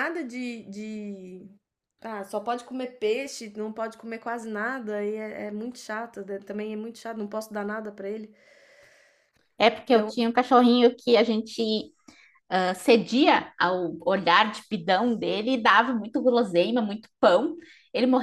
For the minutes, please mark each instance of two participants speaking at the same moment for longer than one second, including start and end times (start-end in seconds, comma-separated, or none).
none